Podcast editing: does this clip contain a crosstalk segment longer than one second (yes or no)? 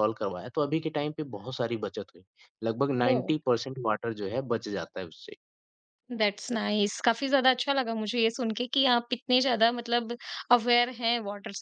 no